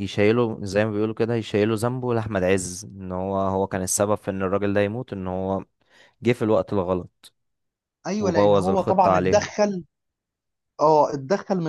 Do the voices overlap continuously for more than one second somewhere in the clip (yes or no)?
yes